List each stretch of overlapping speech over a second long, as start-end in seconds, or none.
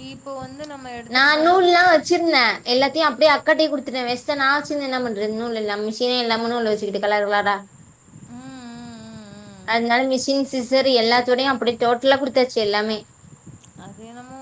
none